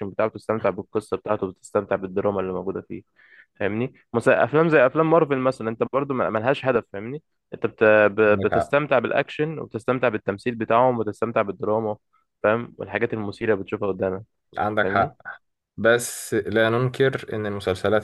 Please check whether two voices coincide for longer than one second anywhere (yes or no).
no